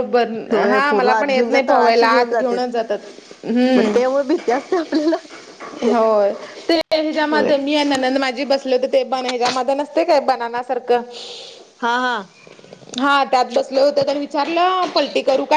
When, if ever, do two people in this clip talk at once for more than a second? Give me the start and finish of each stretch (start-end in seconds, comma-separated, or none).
0.7-2.7